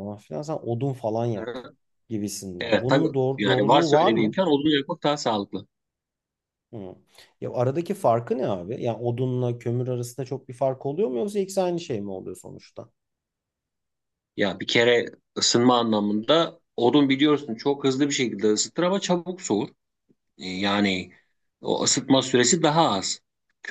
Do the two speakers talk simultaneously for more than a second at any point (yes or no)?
yes